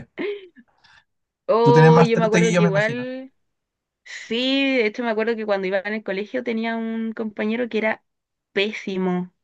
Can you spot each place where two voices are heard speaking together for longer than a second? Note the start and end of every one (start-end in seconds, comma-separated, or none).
1.6-3.1